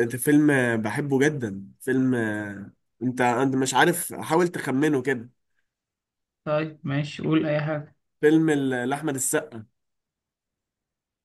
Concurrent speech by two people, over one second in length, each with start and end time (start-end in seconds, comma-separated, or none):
none